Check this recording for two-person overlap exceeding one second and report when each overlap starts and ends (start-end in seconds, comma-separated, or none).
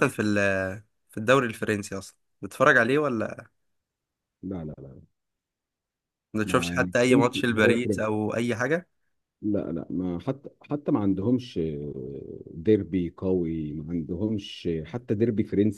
6.5-8.1